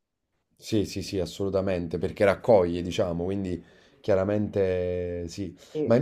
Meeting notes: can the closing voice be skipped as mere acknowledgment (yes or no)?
yes